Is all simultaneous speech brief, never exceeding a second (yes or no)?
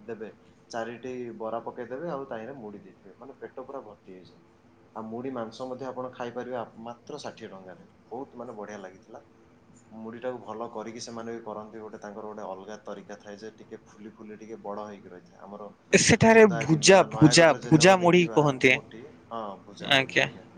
no